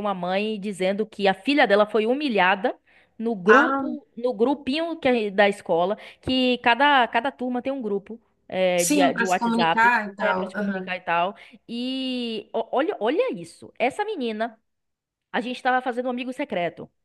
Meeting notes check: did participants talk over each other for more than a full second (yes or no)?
yes